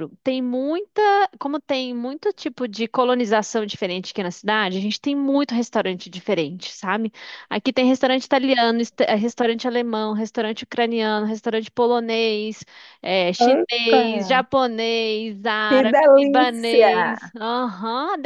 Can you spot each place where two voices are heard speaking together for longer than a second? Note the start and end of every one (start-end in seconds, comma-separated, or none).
15.7-17.3